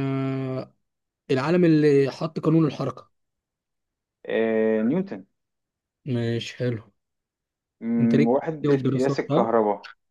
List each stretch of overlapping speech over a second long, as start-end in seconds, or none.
8.0-9.5